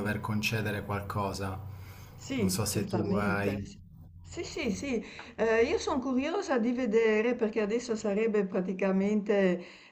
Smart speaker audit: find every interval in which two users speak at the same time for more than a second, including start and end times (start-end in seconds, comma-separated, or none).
2.4-3.6